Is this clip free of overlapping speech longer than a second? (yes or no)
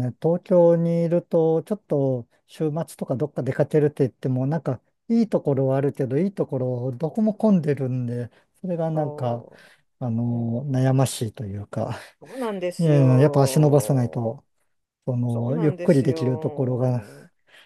no